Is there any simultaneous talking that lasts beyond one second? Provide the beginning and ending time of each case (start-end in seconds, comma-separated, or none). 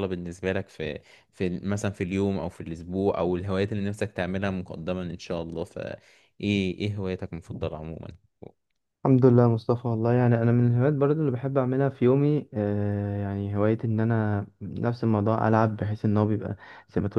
none